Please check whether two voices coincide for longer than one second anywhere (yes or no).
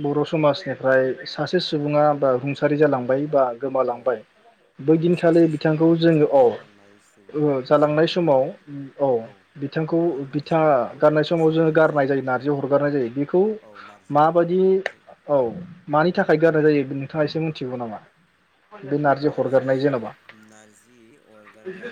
yes